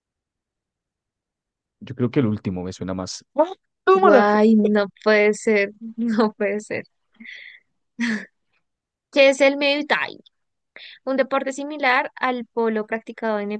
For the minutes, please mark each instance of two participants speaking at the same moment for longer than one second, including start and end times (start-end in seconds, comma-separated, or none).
none